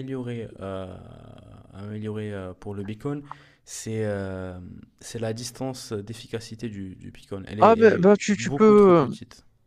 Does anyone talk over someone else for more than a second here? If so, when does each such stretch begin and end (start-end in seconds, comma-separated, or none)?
7.6-9.1